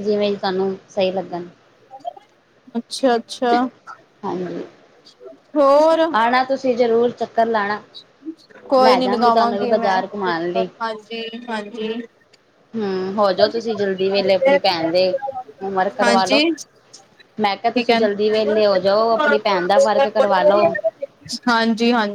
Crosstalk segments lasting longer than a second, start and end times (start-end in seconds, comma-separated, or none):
8.8-10.7